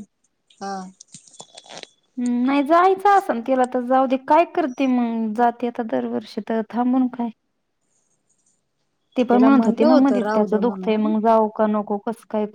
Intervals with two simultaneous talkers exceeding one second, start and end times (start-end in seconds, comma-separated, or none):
9.3-11.1